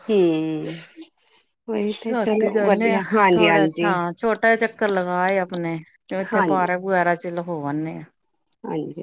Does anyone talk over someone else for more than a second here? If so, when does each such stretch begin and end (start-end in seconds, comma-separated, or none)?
none